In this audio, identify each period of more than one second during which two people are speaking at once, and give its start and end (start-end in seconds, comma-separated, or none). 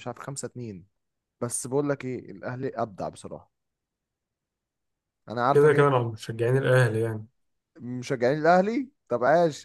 none